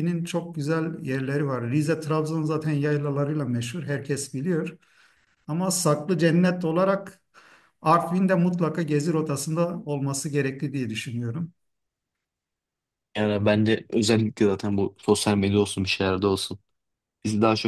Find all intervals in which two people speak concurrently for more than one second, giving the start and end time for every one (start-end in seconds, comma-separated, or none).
none